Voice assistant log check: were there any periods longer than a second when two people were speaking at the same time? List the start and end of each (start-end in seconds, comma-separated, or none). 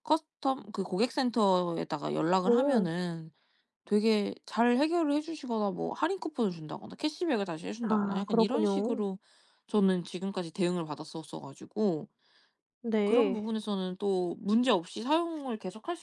7.8-9.0